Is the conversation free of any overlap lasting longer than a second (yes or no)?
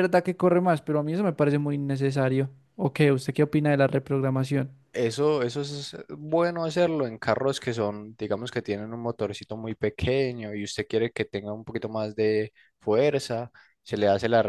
yes